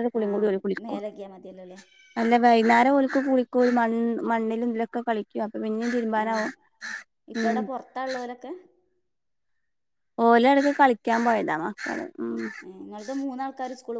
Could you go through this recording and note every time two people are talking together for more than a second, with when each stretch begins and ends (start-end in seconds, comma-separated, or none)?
none